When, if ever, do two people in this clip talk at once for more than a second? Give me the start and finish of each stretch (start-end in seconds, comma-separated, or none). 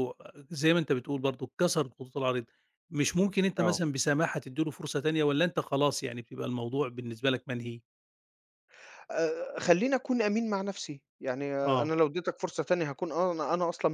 none